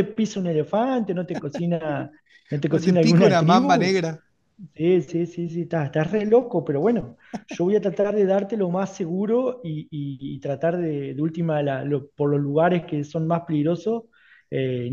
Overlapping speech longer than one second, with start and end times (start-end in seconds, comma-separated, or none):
2.7-4.0